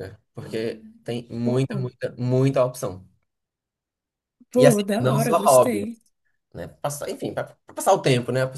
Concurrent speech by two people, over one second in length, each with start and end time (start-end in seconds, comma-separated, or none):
4.6-5.9